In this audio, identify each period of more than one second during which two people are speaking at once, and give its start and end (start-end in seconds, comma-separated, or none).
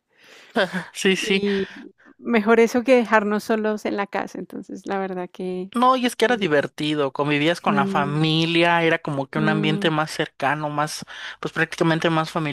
none